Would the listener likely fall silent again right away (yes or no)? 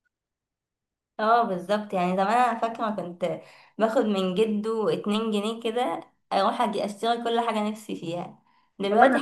yes